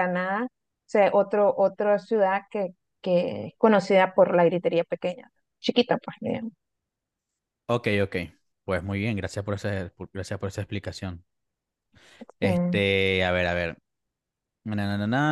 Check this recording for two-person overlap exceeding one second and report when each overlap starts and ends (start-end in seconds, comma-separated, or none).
none